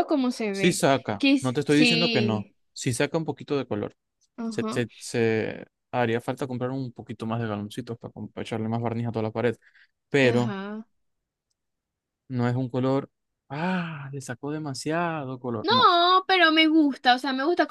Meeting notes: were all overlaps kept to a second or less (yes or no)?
no